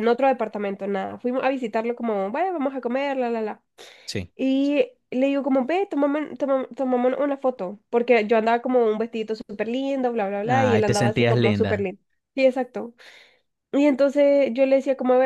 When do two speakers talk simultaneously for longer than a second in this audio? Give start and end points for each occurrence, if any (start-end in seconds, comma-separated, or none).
10.4-11.9